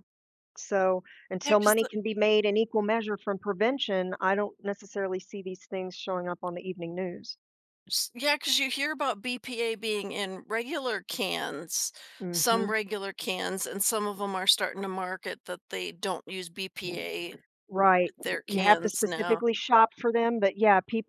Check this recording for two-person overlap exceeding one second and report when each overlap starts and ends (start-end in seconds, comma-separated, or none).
18.0-19.4